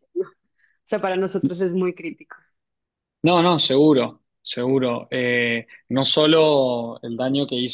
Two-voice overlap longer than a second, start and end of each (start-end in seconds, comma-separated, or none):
none